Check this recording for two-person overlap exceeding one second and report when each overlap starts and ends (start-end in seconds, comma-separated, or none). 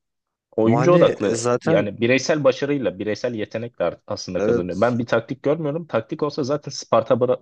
0.6-1.9